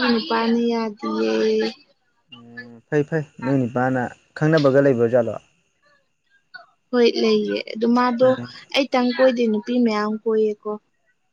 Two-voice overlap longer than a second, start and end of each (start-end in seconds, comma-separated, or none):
none